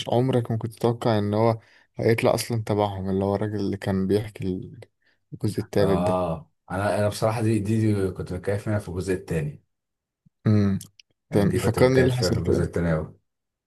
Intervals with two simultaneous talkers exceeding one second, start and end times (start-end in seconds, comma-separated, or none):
11.3-12.7